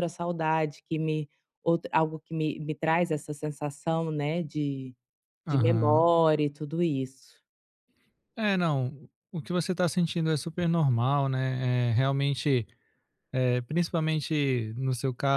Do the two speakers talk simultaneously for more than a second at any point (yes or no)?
no